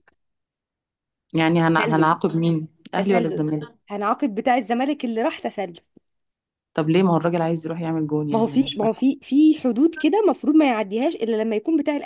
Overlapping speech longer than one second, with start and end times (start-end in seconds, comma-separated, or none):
none